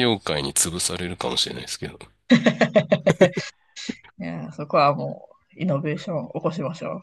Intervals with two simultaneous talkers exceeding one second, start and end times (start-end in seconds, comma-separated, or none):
none